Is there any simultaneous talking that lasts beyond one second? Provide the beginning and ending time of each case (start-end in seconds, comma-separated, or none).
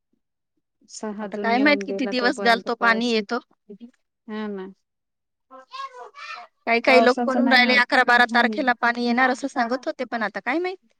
1.2-3.1